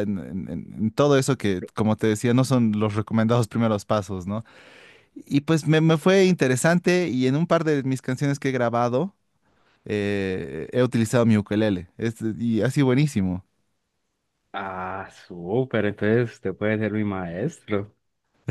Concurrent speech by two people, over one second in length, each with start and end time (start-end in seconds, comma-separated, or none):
none